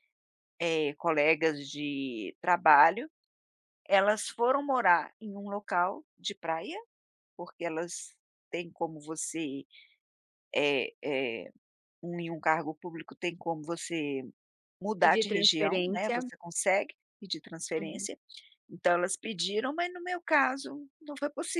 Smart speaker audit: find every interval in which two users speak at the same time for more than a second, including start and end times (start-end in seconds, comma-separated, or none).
15.0-16.3